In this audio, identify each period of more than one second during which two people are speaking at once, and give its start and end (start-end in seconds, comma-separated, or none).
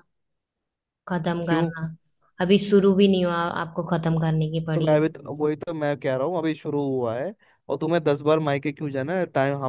none